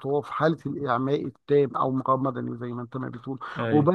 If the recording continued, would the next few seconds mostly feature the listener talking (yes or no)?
no